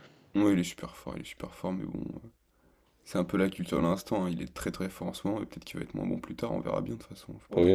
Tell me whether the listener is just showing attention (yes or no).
no